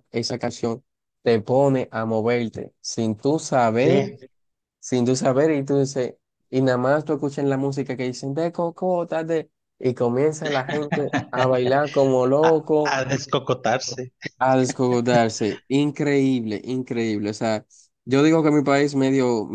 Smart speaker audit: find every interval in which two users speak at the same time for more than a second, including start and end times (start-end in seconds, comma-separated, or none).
none